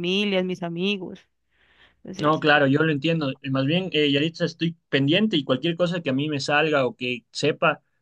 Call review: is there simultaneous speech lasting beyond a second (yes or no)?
no